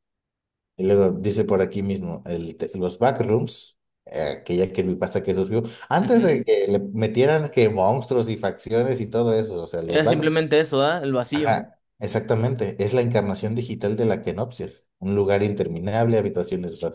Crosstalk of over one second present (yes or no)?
no